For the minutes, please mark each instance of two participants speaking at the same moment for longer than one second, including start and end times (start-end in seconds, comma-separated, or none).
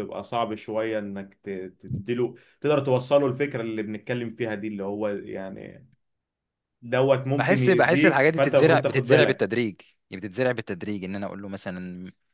7.4-9.5